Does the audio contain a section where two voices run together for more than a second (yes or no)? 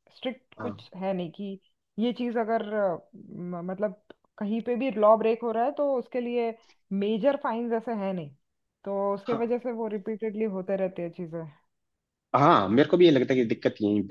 no